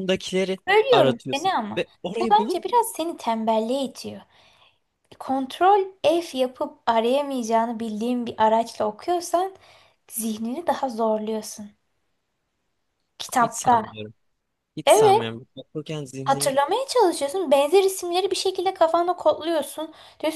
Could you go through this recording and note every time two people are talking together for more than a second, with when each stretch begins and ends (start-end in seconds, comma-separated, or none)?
0.7-2.6